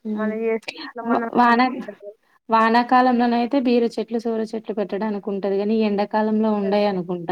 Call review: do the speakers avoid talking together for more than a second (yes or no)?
yes